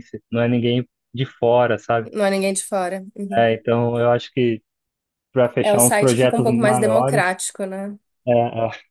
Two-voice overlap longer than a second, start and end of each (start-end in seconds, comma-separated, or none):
5.6-7.4